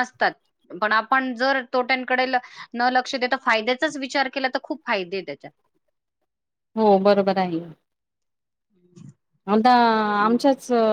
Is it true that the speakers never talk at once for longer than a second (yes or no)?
yes